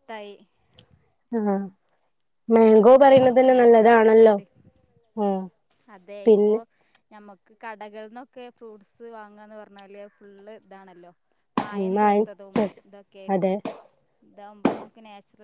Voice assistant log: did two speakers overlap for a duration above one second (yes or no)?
yes